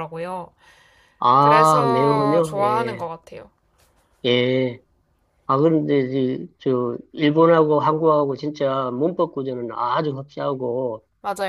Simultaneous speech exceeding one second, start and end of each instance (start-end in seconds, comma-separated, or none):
1.4-3.1